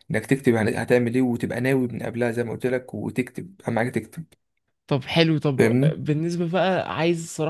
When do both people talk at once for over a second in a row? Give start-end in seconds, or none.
none